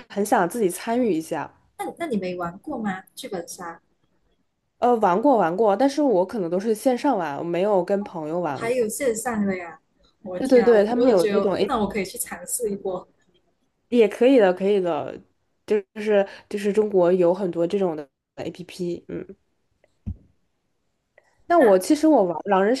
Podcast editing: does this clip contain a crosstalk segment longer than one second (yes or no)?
yes